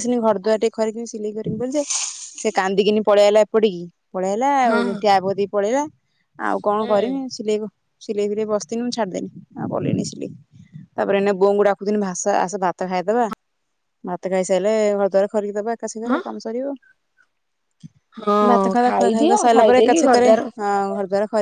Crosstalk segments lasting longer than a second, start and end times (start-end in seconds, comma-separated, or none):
18.5-20.4